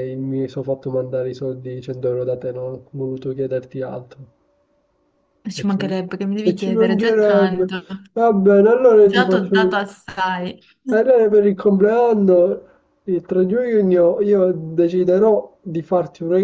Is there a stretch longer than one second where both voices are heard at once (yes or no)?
yes